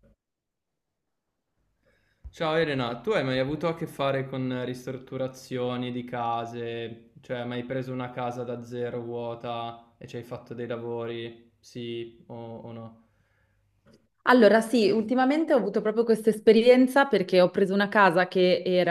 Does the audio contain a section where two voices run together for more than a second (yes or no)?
no